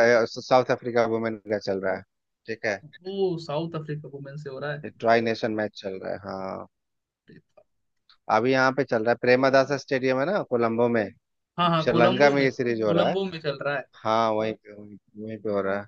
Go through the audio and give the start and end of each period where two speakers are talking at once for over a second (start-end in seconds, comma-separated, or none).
11.8-13.2